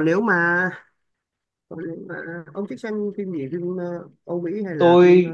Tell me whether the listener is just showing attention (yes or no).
no